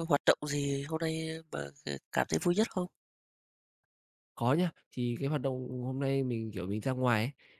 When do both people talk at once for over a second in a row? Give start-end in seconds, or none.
none